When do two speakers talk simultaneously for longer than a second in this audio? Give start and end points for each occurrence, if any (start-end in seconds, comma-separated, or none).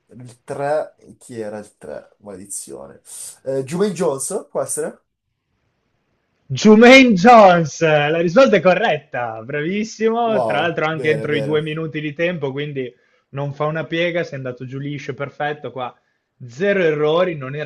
10.2-11.6